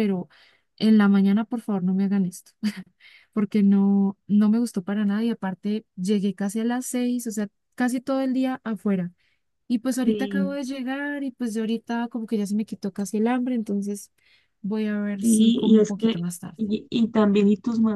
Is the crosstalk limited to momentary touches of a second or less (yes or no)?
no